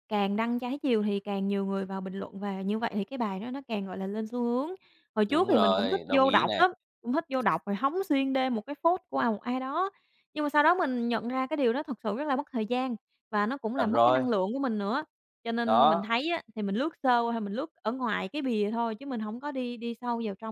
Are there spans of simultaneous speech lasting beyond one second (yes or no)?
yes